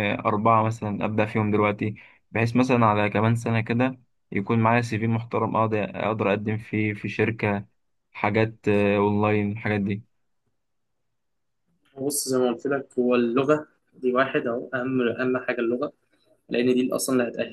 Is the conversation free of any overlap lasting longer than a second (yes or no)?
yes